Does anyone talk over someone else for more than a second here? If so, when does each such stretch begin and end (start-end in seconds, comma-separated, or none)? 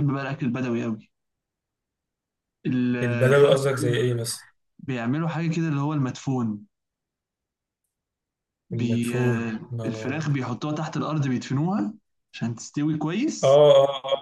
8.7-10.3